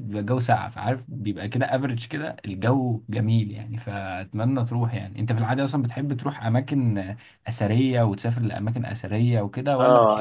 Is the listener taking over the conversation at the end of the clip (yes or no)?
yes